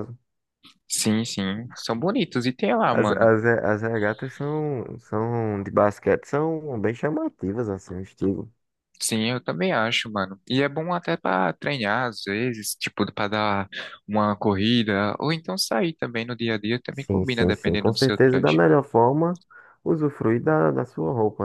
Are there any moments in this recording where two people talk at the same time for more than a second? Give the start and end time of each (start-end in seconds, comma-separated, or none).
16.9-18.6